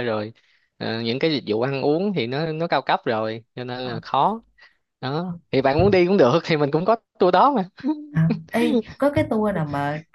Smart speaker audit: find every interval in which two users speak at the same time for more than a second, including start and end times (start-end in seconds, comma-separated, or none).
none